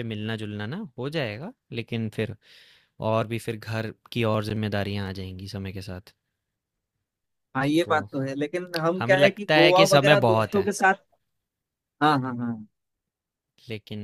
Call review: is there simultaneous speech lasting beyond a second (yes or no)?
yes